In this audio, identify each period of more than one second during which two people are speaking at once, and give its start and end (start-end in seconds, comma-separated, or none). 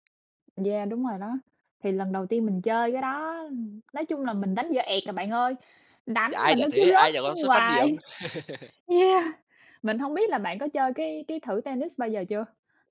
6.3-7.9